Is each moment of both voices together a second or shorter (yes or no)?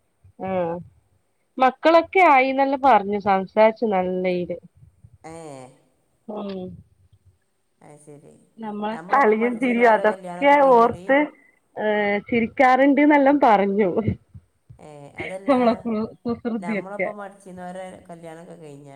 yes